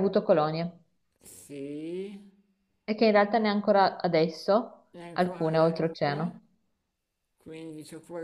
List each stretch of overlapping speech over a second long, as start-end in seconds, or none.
4.9-6.4